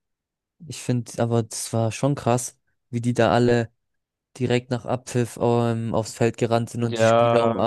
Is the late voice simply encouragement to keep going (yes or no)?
yes